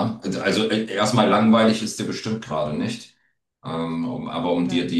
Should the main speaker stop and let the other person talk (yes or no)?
no